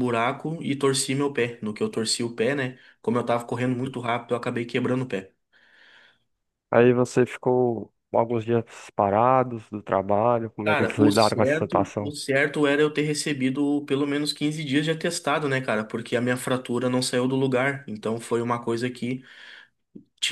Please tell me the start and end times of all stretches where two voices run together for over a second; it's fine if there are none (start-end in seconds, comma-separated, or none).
10.6-12.1